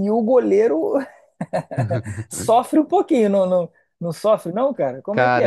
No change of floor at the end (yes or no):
yes